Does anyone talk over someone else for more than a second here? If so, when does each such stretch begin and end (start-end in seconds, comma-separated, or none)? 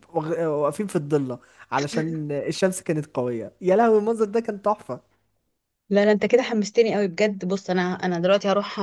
none